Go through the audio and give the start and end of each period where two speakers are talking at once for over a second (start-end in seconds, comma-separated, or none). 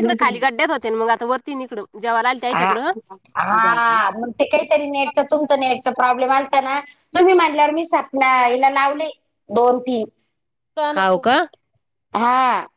none